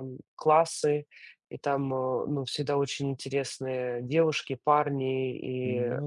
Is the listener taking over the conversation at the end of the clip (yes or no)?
no